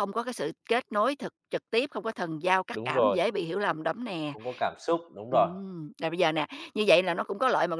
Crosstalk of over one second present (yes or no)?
no